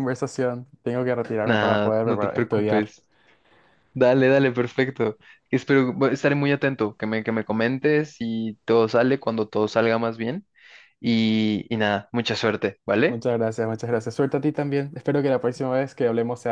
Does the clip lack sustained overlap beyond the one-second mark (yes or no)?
no